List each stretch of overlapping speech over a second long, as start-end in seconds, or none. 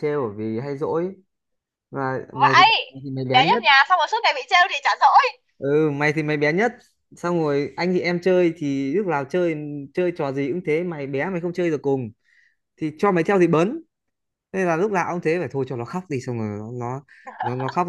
none